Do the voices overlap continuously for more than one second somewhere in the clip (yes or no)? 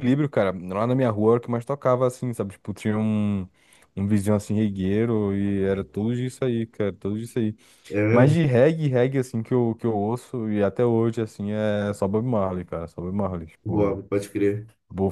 no